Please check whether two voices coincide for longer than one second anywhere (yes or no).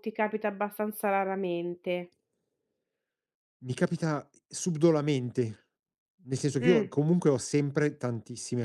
no